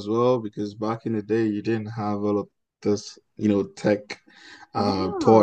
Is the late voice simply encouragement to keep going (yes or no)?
yes